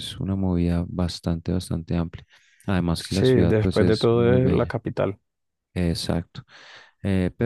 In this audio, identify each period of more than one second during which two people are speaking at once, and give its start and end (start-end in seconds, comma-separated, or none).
3.0-4.7